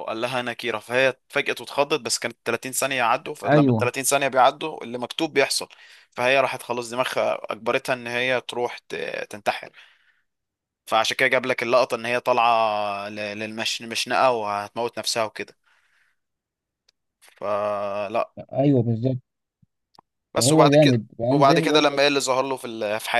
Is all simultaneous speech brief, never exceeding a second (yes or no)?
no